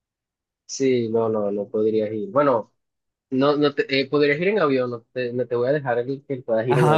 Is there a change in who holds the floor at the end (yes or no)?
yes